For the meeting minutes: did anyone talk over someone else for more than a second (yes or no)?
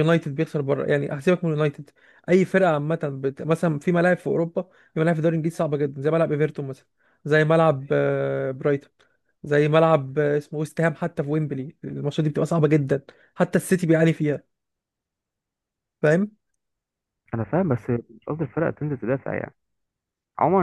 no